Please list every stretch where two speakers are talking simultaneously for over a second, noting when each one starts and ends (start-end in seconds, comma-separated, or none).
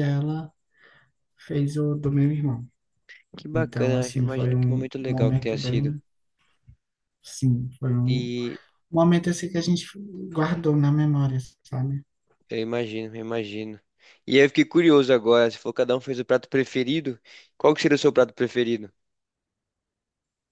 3.5-5.9